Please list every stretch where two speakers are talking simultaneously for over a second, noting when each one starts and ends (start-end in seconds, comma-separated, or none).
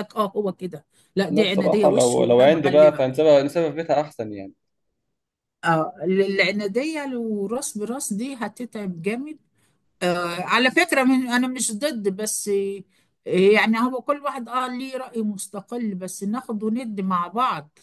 1.3-3.1